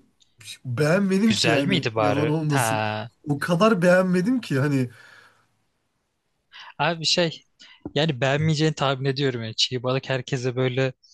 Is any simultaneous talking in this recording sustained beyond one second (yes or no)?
yes